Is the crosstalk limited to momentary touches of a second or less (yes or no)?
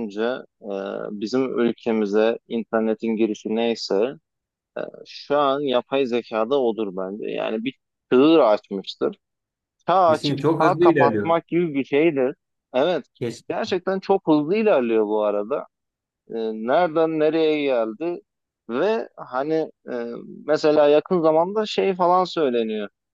no